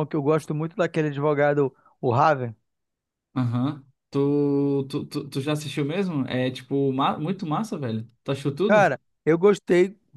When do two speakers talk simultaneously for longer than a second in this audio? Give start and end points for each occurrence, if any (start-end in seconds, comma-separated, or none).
none